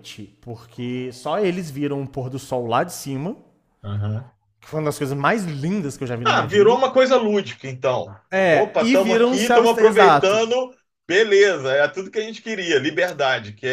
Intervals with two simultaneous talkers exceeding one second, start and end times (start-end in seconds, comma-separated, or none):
8.5-10.4